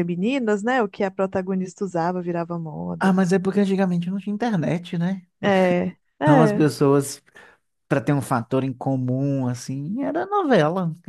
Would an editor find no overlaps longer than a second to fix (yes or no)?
yes